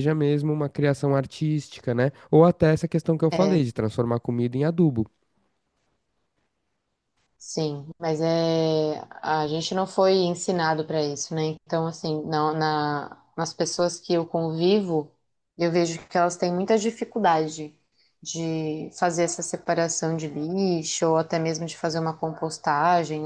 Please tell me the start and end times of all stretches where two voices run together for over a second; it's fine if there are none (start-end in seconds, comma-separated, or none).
none